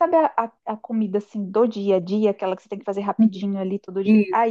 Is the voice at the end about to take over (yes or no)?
no